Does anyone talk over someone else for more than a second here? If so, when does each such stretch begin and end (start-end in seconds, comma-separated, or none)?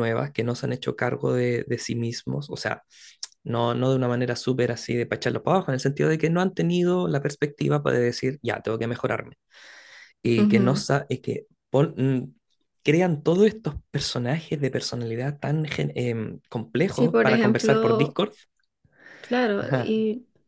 16.9-18.2